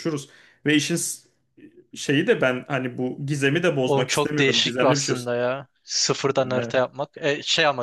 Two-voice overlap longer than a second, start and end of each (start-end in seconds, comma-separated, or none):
3.8-5.1